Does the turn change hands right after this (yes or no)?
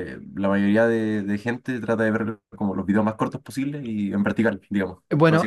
yes